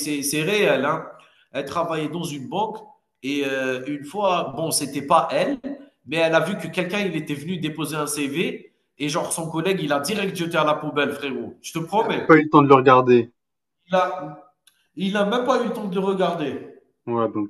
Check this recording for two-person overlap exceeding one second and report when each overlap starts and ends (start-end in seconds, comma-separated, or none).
none